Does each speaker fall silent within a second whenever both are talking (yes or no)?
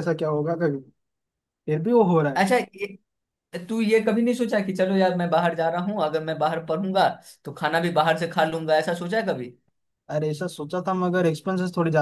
yes